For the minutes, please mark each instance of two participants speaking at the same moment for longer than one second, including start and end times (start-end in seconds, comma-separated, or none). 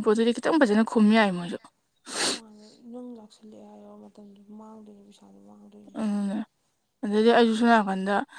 none